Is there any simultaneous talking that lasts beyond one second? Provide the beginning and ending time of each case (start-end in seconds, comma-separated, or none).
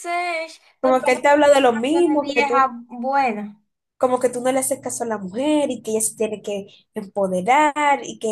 0.8-2.7